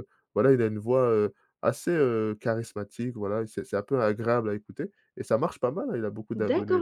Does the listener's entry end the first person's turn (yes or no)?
yes